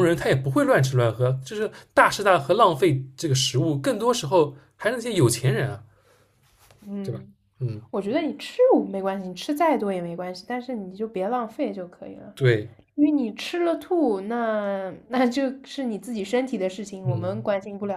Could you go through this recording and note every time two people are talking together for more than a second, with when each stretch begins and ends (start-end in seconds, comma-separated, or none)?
none